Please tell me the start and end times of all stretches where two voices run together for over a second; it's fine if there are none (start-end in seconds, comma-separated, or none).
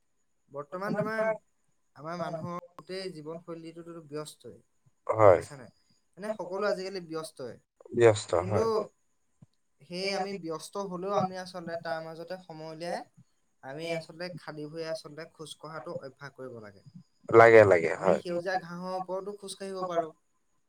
none